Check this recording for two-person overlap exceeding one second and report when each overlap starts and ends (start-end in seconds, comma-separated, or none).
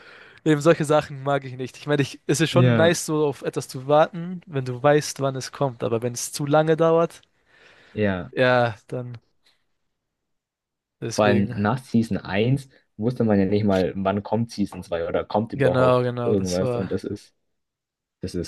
15.5-16.9